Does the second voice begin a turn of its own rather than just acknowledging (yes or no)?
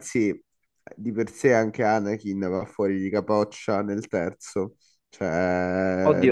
yes